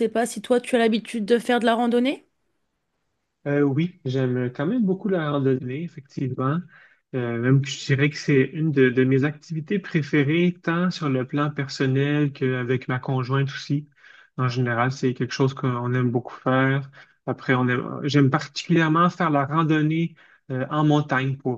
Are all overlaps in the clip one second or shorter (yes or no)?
yes